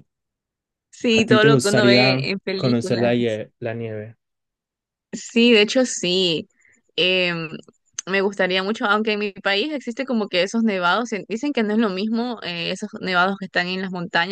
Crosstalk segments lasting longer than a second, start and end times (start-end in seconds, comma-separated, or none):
1.1-3.4